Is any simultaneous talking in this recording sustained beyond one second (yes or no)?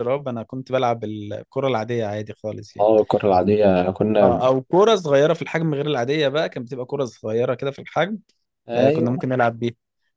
no